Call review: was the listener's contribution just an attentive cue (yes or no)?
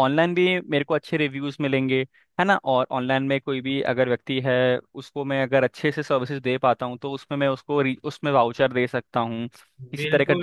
no